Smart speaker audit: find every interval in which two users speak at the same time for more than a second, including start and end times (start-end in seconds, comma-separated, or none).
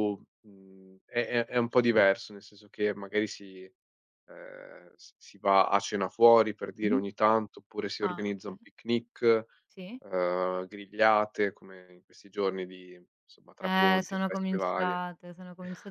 13.6-15.0